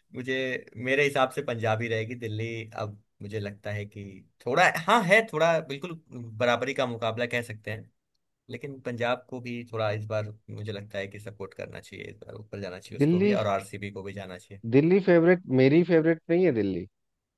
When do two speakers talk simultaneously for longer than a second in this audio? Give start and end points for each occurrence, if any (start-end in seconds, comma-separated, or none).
none